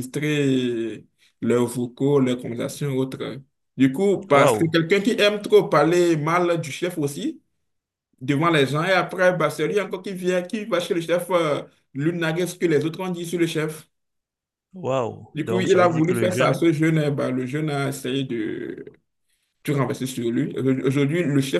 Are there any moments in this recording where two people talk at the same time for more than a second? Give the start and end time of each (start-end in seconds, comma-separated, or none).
15.3-16.6